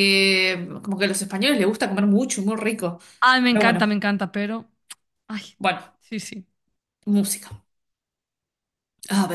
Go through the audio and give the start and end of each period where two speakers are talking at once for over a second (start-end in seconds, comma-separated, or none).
none